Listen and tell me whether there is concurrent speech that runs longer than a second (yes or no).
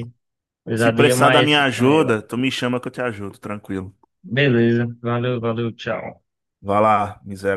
yes